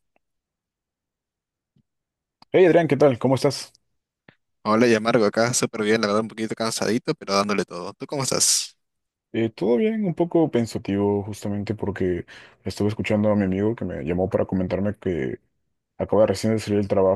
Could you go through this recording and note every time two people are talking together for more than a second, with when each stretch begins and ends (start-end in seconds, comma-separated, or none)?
none